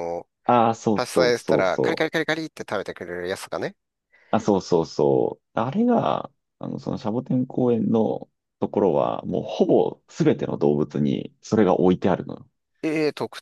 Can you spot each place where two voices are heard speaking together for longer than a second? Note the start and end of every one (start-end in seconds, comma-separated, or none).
0.9-2.2